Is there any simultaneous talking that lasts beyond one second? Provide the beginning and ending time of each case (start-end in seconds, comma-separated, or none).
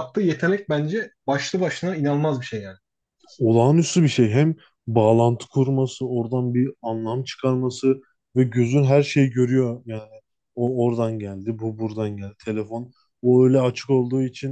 none